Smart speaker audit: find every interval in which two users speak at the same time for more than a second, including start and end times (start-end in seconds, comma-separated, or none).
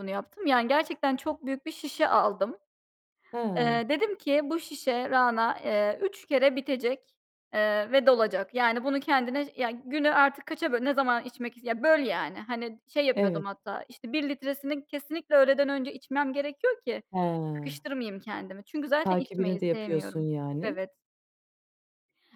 19.0-20.8